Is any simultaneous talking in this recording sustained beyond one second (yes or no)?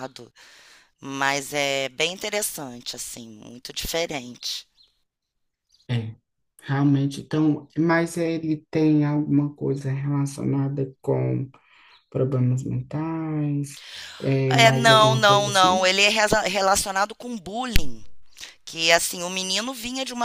yes